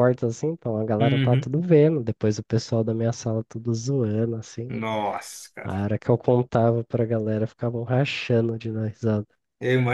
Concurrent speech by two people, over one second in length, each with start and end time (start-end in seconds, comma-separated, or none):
none